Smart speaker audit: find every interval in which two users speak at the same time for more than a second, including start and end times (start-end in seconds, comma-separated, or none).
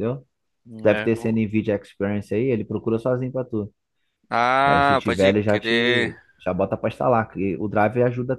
4.7-6.1